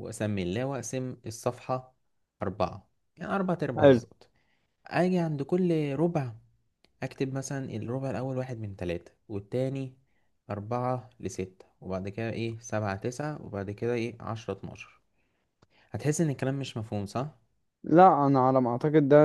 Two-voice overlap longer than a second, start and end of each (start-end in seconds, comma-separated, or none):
none